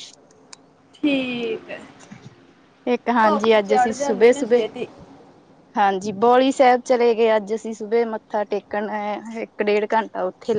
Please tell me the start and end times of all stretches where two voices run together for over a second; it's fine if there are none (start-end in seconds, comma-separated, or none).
3.2-4.6